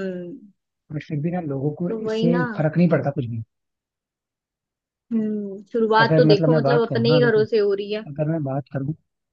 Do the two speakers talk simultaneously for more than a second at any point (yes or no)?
yes